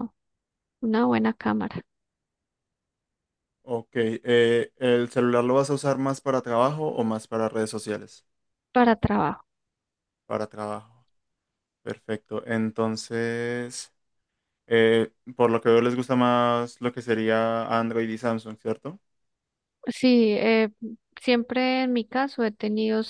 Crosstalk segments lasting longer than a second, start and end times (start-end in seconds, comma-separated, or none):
none